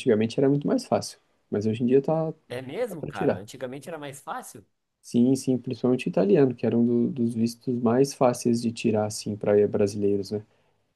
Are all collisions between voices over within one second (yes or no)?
yes